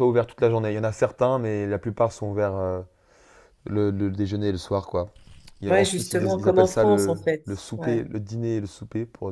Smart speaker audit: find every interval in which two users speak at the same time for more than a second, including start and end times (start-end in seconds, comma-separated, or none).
5.7-8.0